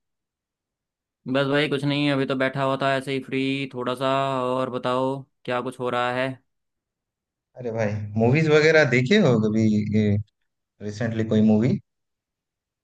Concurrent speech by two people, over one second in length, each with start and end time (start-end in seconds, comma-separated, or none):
none